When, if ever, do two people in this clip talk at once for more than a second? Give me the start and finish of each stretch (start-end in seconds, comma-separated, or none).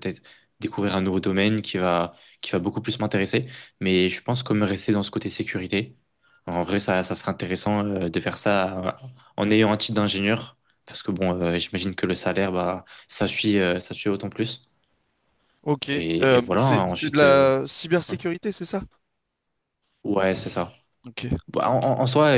15.9-17.5